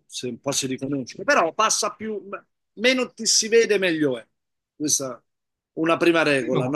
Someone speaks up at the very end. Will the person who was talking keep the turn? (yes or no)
yes